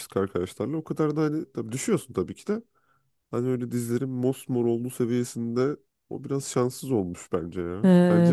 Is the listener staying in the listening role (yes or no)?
no